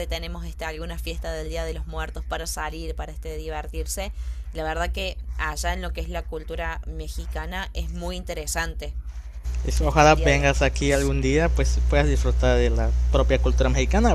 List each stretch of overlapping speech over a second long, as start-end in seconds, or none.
9.8-11.2